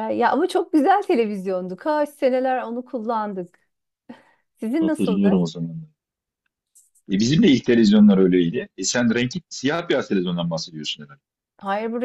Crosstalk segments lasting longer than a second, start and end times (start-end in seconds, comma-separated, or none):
none